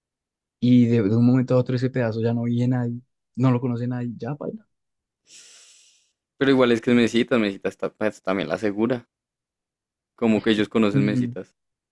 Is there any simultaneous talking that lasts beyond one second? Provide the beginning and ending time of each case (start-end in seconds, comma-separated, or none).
none